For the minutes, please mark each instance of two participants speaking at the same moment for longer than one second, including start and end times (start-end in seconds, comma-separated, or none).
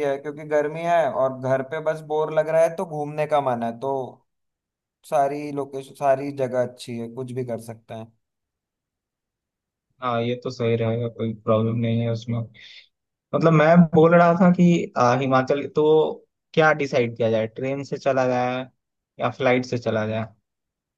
none